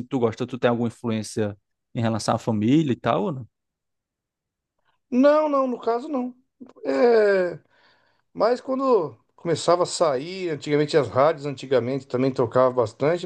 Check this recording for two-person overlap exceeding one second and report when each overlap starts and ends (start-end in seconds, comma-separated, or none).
none